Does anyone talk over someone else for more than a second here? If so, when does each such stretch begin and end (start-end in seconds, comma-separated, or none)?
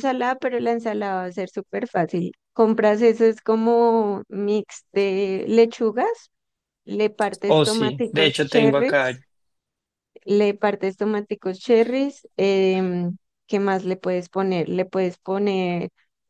7.5-9.2